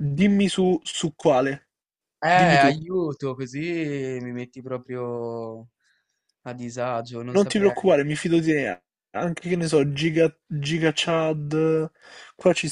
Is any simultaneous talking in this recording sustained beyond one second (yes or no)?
no